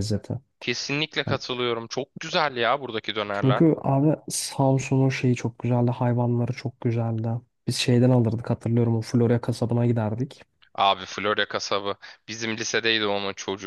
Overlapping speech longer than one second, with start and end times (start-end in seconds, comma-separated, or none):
none